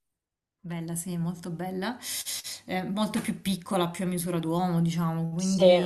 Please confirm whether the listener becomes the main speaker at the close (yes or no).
no